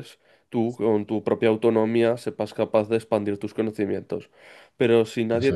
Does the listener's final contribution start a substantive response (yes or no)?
no